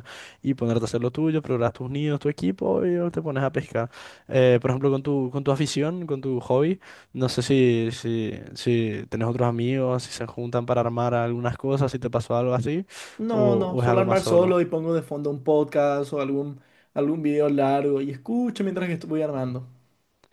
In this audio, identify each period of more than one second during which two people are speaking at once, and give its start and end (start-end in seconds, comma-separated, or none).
13.3-14.6